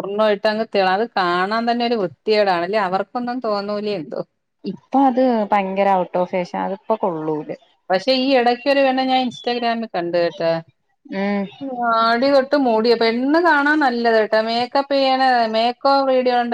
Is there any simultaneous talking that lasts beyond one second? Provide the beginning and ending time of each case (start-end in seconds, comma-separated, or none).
none